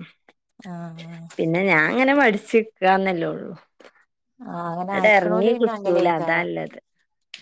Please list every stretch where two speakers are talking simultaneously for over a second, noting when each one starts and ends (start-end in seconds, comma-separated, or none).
4.9-6.5